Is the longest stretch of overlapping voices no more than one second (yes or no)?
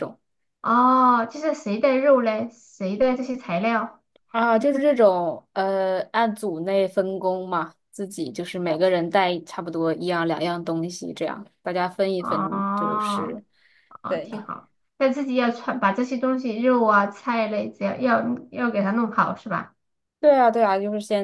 no